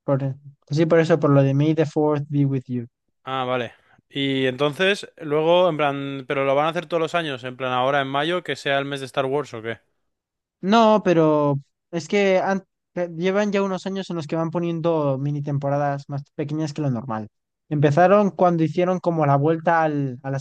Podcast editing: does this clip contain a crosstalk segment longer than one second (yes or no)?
no